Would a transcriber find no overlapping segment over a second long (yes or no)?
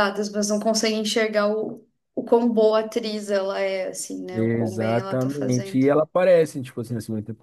no